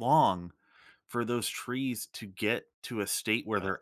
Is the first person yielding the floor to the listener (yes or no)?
no